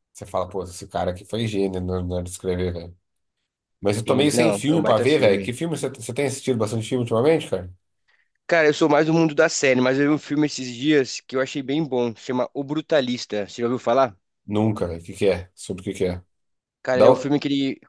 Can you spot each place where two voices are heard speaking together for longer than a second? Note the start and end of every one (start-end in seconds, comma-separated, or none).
4.0-5.6